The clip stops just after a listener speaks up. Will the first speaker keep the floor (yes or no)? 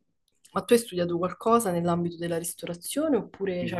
no